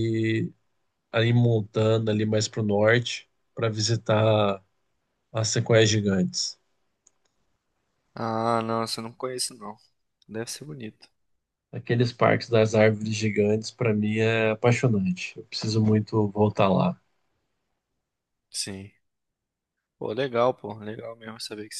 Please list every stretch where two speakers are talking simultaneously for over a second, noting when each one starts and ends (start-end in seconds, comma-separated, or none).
none